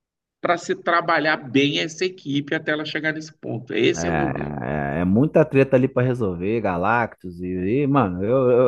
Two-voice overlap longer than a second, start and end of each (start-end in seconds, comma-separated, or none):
none